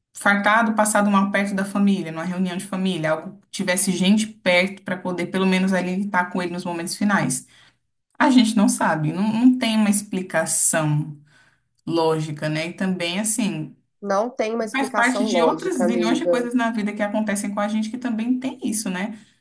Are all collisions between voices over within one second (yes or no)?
no